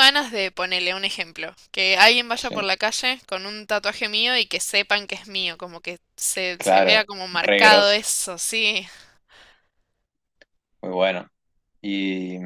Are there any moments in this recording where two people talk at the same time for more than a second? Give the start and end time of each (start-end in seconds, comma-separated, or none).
6.6-8.0